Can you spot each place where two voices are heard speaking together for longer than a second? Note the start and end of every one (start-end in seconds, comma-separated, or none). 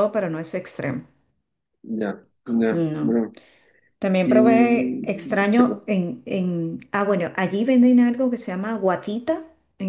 4.2-5.9